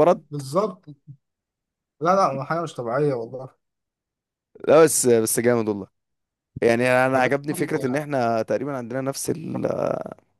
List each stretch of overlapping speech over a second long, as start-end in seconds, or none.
none